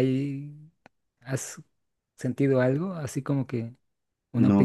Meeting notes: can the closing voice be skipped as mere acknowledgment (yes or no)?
no